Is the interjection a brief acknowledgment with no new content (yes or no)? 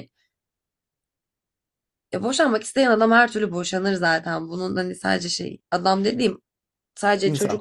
yes